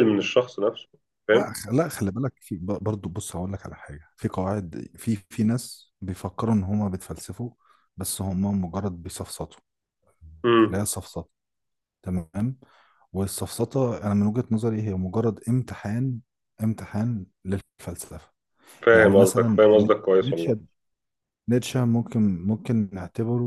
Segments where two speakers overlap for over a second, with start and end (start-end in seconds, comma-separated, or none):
18.9-20.6